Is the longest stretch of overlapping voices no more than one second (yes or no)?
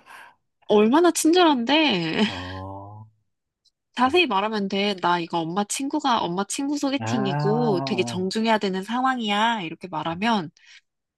no